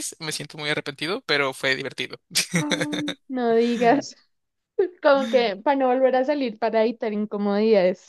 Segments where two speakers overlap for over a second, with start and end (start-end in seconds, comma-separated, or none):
none